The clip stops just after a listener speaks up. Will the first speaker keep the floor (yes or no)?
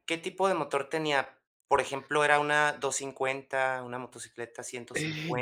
no